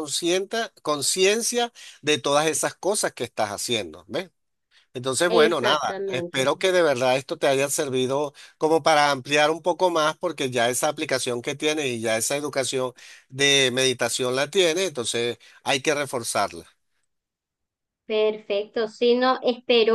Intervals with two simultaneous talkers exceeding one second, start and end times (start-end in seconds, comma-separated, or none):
5.3-6.5